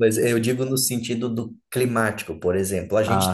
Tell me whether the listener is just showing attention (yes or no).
yes